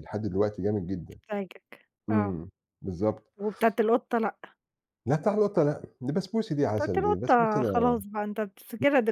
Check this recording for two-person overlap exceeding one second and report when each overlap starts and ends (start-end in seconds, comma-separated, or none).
6.8-8.0